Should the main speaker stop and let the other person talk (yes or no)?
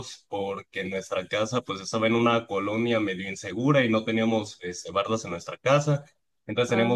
no